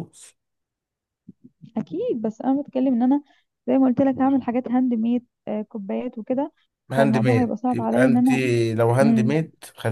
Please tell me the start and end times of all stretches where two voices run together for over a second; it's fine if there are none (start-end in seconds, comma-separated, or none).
7.0-8.3